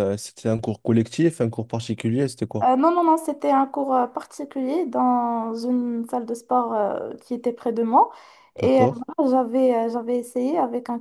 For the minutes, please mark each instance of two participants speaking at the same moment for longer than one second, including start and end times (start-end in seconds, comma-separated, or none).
none